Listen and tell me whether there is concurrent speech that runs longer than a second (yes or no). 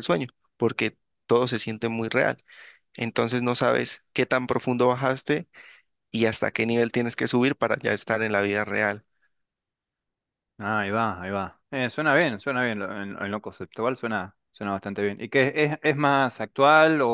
no